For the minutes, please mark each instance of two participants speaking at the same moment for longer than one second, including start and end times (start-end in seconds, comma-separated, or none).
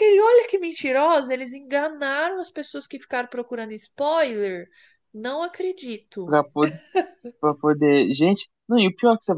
none